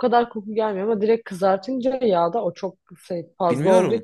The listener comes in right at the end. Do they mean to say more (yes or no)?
no